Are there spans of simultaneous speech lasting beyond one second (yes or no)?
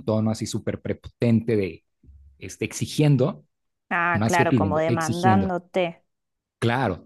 yes